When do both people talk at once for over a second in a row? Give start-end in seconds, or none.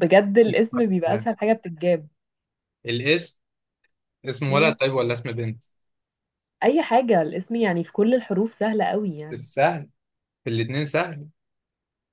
none